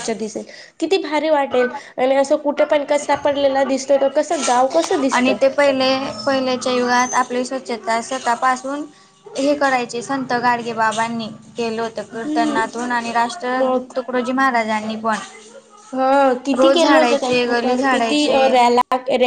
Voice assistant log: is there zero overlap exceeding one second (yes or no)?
no